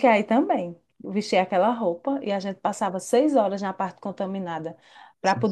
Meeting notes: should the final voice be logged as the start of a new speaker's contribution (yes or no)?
no